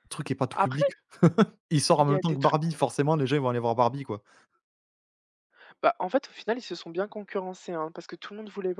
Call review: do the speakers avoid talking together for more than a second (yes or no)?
yes